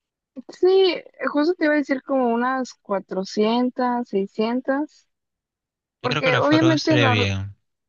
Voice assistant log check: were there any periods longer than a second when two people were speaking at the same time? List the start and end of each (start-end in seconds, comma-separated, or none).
6.0-7.3